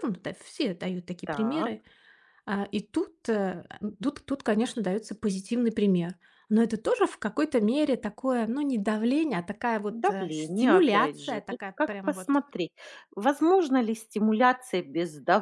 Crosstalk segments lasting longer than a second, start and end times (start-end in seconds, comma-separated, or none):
9.9-12.4